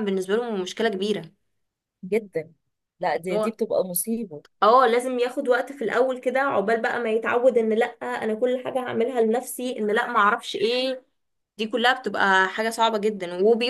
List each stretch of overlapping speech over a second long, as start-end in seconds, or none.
none